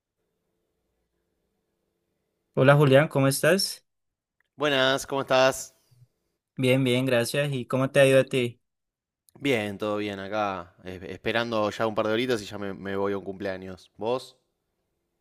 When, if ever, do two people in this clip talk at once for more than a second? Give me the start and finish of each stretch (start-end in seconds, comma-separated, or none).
none